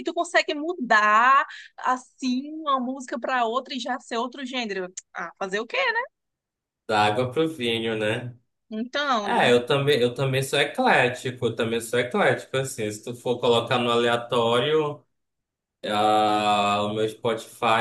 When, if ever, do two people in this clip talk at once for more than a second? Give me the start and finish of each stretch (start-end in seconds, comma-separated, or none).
none